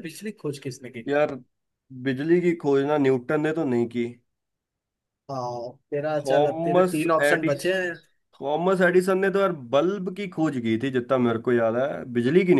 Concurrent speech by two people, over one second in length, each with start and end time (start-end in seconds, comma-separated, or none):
6.2-7.7